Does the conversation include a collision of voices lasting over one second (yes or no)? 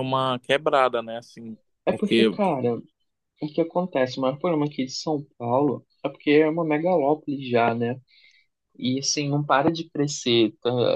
no